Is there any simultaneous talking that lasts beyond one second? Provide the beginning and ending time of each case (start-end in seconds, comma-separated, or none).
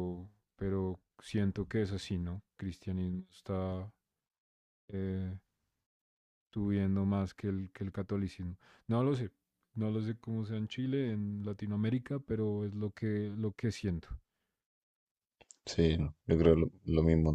none